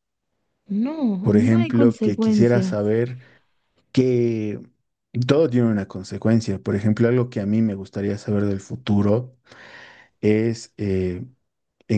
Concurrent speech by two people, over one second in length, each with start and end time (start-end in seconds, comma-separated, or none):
1.2-2.8